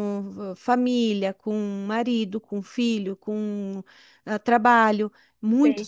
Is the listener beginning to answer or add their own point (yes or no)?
yes